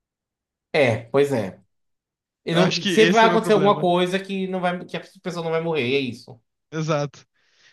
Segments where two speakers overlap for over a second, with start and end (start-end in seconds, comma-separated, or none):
2.5-3.9